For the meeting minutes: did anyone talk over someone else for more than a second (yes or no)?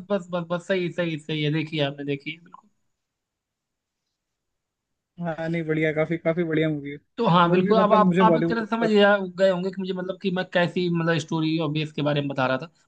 yes